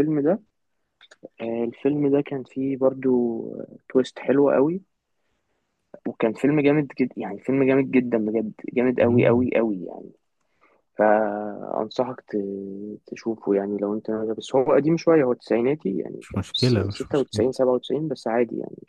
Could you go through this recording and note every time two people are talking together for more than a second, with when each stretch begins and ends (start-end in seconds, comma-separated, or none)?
16.2-17.5